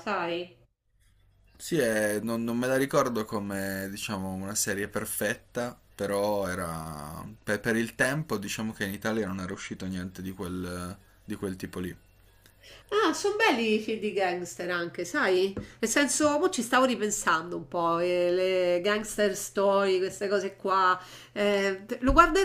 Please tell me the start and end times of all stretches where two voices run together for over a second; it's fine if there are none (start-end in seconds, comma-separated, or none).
none